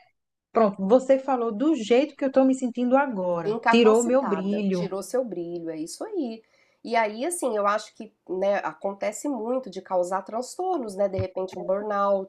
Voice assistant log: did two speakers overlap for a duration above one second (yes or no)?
yes